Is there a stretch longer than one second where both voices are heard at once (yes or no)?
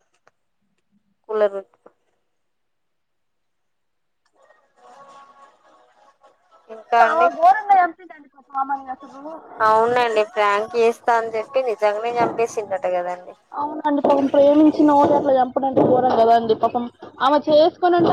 no